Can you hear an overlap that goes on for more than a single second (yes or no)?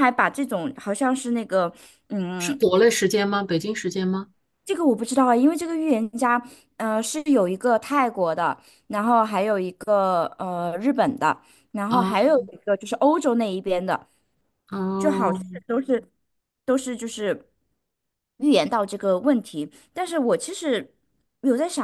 no